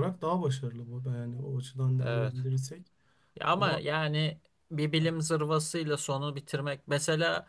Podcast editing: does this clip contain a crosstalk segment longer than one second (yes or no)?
no